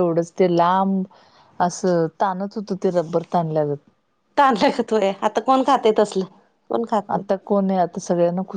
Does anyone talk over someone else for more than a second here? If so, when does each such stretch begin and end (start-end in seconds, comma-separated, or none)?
none